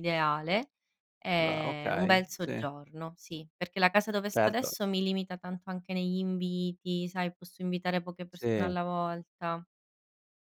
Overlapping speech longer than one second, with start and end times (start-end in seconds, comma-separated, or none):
1.4-2.7